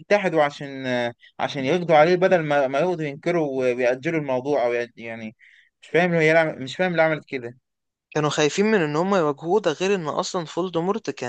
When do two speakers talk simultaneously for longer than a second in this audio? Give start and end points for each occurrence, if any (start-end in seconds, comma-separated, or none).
none